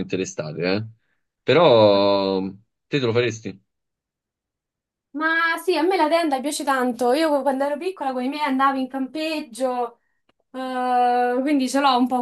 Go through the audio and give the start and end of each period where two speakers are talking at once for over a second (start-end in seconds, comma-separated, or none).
none